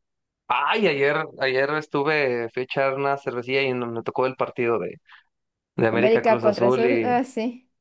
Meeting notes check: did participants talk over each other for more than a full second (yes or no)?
yes